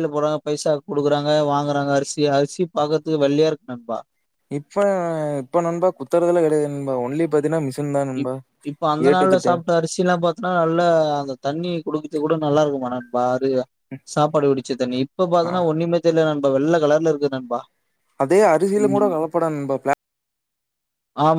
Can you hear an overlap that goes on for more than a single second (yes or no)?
no